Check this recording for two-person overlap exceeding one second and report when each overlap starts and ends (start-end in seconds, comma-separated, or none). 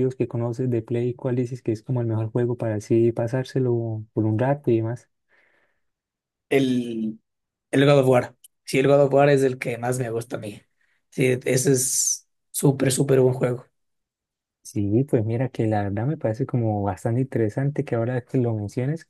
none